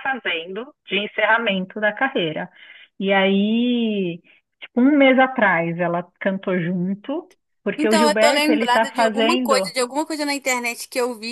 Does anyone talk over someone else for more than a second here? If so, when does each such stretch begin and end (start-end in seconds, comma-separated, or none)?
7.8-9.7